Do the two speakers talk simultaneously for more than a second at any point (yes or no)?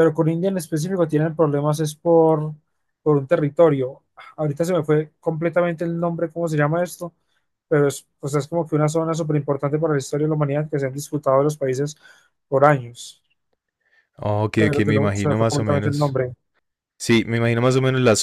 yes